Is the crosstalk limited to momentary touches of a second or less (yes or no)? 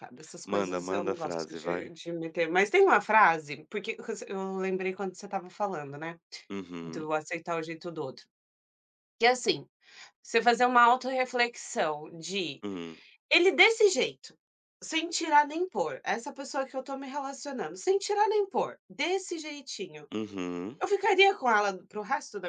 no